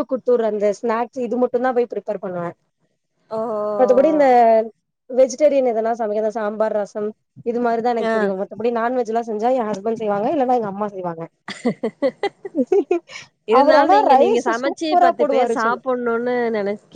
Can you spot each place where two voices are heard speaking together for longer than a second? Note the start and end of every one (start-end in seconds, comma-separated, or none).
13.6-15.8